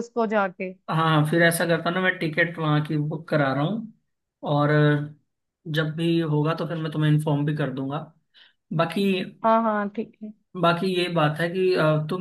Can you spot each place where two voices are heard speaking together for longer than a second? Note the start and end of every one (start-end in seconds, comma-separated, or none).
none